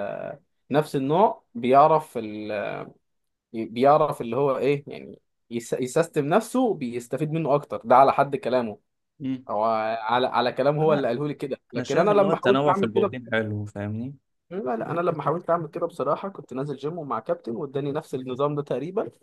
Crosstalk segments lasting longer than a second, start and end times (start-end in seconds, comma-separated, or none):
11.8-13.1